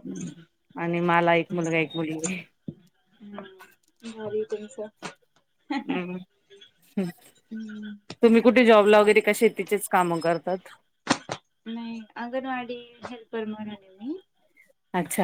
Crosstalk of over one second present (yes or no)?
no